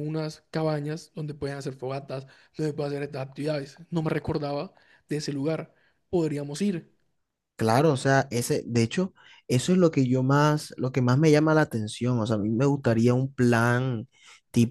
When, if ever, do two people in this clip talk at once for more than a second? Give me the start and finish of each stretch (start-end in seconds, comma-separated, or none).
none